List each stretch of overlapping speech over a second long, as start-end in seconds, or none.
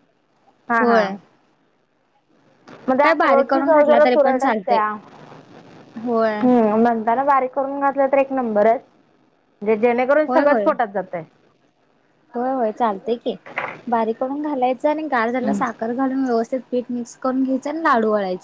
3.0-4.8